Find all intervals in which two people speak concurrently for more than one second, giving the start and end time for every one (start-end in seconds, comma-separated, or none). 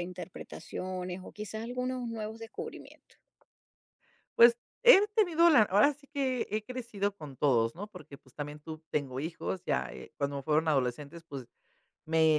none